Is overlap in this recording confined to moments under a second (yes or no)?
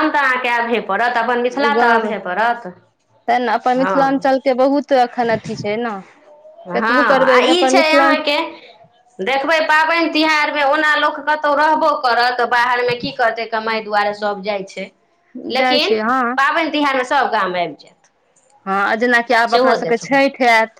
no